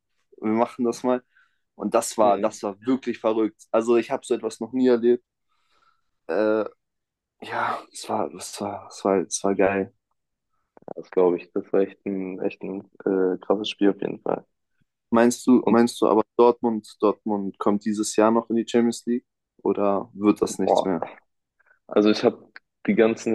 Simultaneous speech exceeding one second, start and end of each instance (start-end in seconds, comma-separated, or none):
none